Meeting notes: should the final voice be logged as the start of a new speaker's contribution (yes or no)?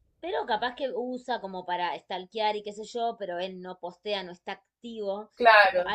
no